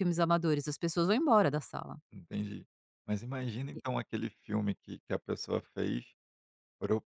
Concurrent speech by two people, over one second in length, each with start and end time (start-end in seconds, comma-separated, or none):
none